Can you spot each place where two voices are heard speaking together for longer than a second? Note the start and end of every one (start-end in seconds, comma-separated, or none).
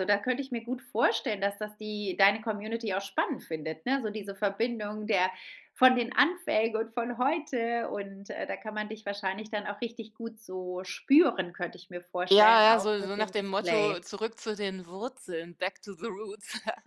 12.3-14.0